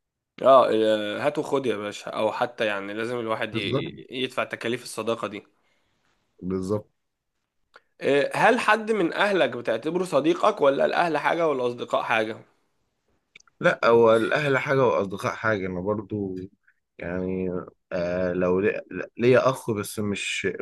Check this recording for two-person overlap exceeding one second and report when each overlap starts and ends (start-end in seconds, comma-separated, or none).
none